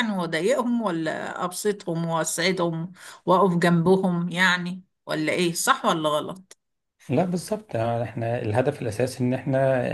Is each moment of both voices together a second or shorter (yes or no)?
yes